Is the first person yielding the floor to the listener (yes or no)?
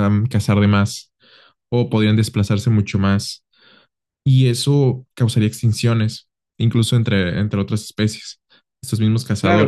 yes